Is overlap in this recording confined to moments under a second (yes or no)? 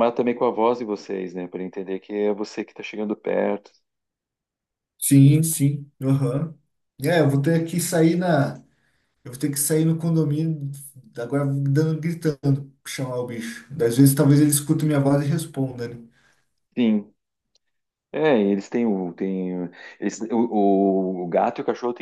yes